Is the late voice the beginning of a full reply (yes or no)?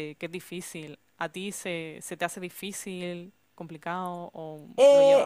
yes